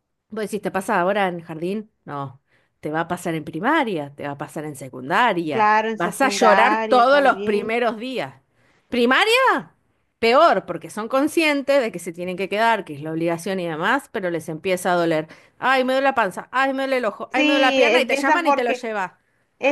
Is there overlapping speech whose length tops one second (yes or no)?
yes